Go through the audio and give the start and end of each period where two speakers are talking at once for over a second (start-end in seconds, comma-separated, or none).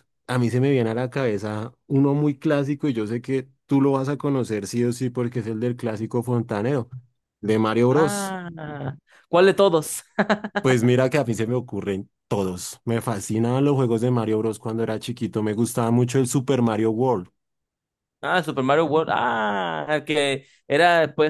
none